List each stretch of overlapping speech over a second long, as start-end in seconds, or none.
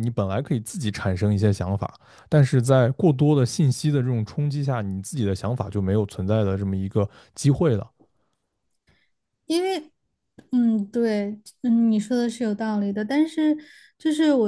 none